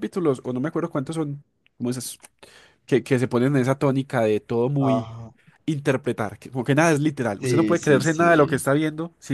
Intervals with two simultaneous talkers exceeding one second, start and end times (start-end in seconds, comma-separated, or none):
7.4-8.6